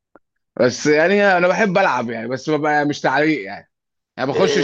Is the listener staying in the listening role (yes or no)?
no